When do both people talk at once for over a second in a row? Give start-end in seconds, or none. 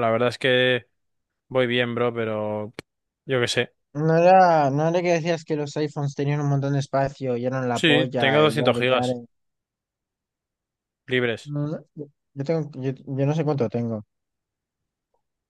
7.7-9.2